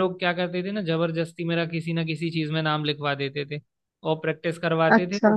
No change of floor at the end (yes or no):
yes